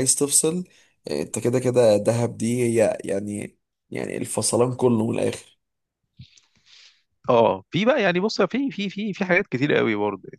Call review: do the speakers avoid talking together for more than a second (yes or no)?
yes